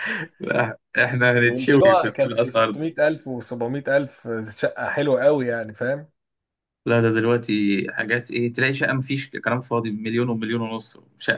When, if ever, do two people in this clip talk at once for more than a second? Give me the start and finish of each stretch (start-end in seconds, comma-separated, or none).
1.4-2.9